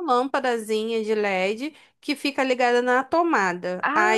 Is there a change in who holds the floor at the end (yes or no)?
no